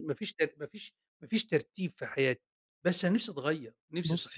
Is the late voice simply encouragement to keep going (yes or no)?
no